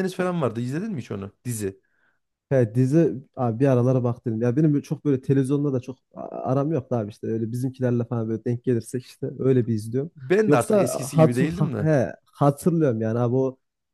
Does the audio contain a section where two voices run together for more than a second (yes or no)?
yes